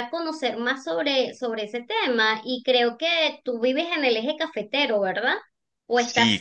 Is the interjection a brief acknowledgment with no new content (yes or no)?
no